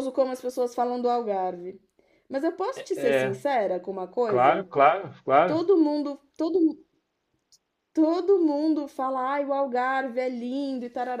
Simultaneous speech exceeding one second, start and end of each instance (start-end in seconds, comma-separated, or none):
none